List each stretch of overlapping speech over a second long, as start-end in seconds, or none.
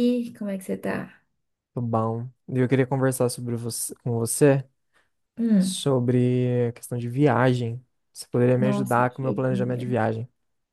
8.6-9.8